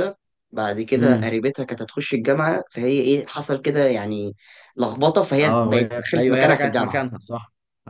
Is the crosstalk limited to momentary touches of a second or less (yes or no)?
no